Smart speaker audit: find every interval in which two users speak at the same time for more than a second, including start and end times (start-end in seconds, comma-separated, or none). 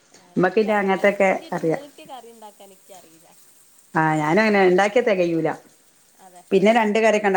none